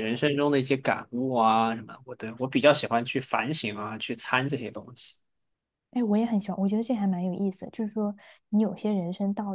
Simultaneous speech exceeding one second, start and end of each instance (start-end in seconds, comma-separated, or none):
none